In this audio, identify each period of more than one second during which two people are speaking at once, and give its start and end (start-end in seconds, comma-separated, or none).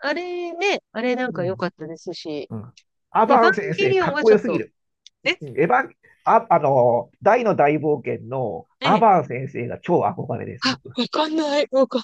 3.3-4.6